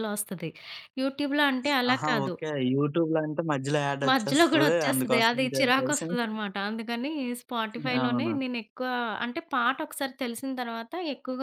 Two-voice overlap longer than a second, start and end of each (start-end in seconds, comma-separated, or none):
4.1-6.1